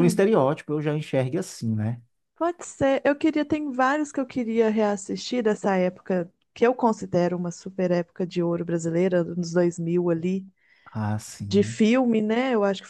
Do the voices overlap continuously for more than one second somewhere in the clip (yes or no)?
no